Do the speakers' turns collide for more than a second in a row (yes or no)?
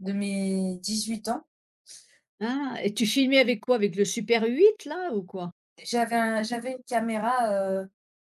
no